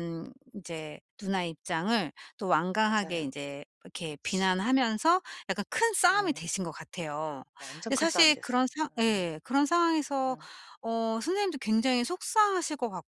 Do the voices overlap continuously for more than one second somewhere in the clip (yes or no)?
yes